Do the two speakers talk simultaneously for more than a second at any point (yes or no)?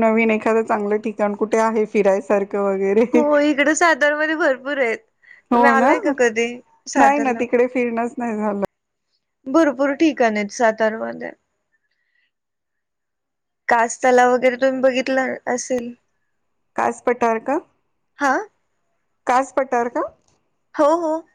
no